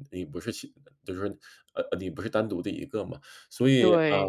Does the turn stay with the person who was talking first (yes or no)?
no